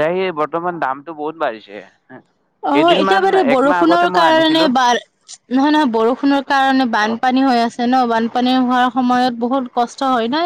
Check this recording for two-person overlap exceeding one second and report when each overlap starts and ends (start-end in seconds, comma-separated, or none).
2.7-4.7